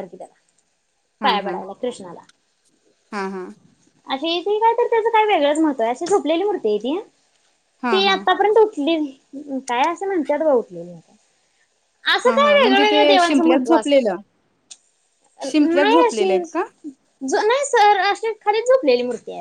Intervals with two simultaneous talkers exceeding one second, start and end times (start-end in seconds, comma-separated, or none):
12.2-14.1